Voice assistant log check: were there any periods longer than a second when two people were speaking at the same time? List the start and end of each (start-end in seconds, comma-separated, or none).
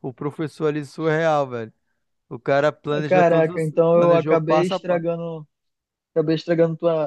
3.1-5.0